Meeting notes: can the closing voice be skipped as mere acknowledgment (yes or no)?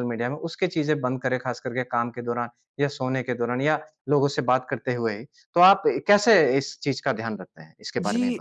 no